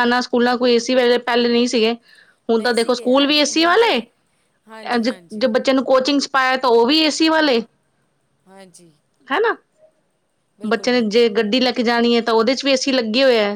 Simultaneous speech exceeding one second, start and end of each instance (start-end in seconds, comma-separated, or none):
2.6-4.0